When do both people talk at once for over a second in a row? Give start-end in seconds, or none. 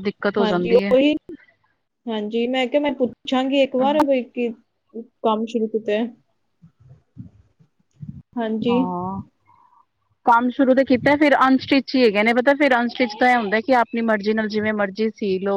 none